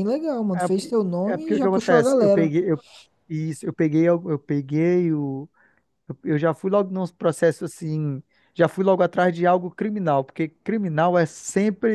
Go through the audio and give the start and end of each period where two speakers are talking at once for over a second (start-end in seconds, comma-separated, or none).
0.6-2.5